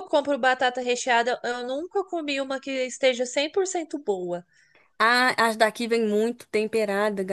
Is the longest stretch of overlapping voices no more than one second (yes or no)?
yes